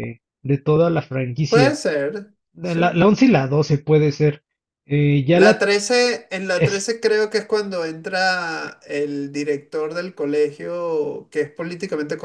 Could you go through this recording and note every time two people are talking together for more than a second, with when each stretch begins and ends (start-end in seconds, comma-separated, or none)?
none